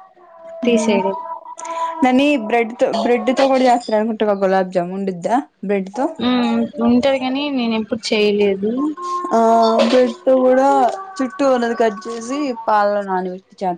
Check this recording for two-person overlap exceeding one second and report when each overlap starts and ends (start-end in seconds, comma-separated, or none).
none